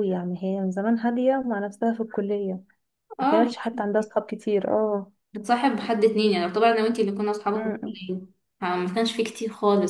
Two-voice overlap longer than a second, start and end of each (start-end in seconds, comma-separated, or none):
none